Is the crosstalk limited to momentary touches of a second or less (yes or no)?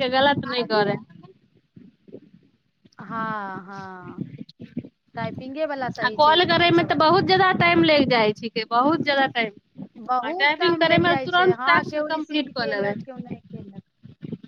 no